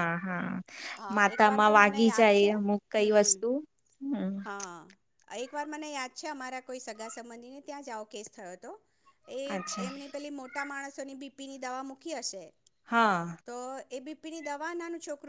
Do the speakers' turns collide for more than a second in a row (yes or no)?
yes